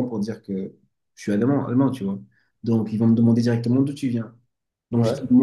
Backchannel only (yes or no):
yes